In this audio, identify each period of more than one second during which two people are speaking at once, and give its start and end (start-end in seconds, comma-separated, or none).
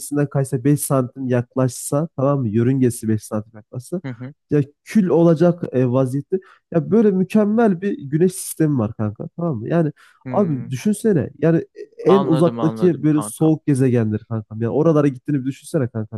12.1-13.5